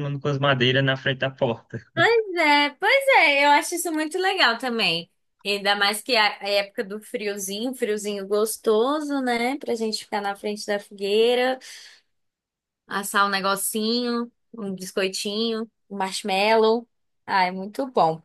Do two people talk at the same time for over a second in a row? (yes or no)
no